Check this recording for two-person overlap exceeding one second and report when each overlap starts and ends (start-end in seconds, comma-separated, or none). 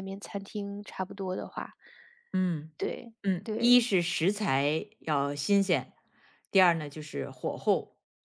none